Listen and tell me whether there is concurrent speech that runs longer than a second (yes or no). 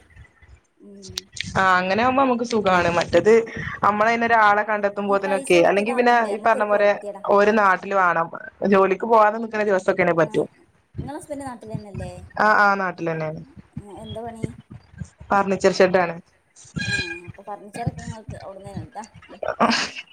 yes